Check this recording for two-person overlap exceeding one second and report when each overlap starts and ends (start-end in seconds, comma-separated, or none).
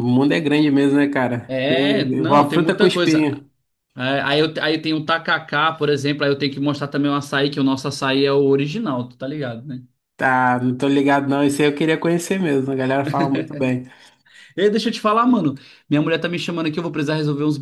1.5-3.3